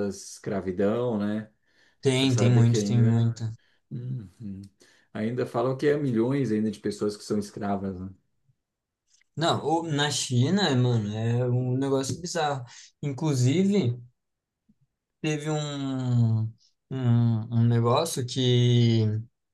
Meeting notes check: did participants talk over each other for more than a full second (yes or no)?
yes